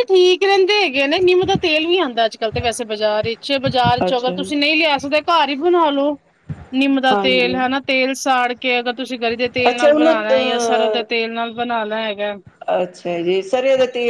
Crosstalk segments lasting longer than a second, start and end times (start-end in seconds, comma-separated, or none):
9.7-11.0